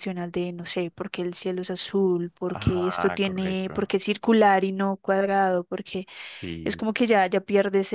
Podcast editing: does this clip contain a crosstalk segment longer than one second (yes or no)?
yes